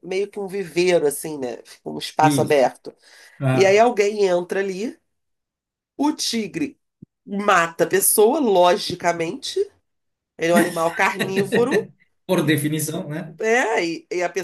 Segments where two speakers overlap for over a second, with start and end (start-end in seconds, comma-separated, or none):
none